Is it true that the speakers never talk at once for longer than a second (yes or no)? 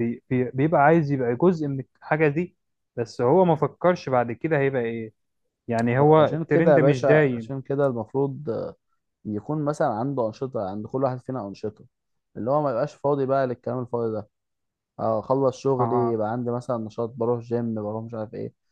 no